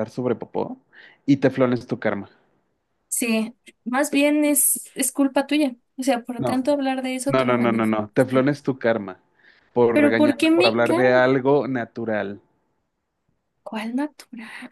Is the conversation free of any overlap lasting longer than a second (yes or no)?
no